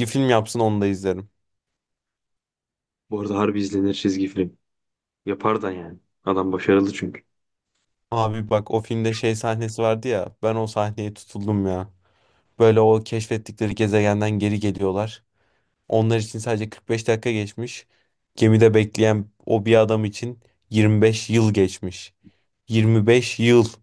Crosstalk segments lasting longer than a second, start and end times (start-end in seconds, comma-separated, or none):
none